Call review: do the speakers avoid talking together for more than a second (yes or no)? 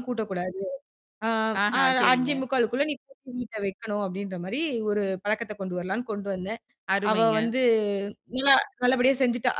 yes